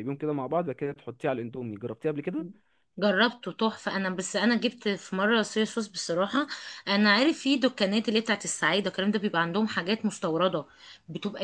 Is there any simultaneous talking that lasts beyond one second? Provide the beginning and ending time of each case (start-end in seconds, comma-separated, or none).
none